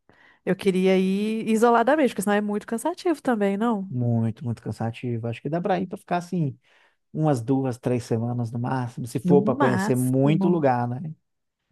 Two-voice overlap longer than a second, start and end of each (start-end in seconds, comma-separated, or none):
9.2-10.7